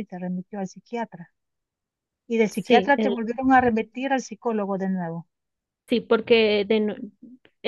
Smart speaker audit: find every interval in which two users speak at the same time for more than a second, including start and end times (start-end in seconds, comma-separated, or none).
none